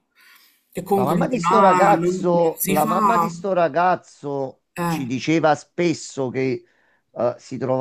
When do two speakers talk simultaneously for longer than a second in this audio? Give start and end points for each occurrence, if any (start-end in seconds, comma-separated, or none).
0.9-3.3